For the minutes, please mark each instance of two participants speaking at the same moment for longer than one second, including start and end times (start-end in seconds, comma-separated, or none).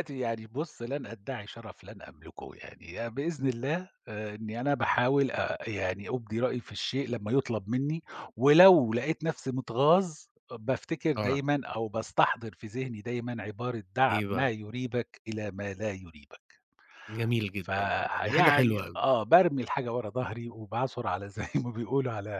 17.6-19.0